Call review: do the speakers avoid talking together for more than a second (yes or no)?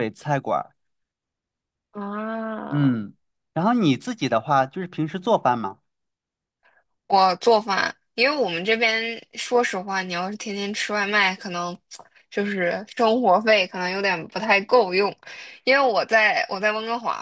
yes